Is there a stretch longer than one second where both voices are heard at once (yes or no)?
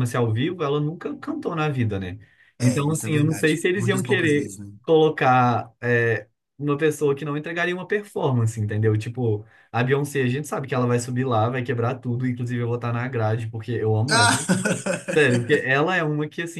yes